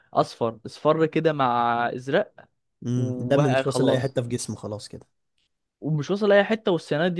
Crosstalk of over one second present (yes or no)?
yes